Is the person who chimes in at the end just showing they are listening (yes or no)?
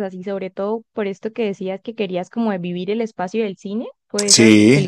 yes